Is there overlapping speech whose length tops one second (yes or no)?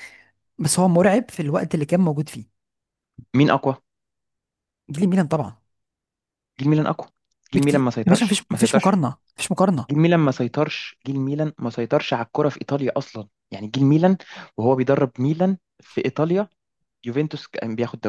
yes